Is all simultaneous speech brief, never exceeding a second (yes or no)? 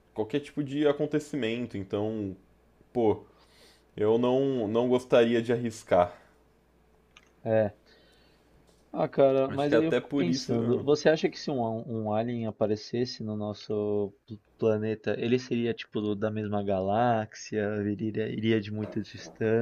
no